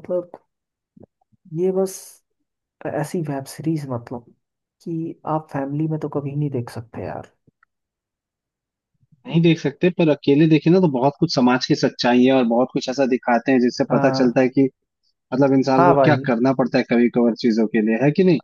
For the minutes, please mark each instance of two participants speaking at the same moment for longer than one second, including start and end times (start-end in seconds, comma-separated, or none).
none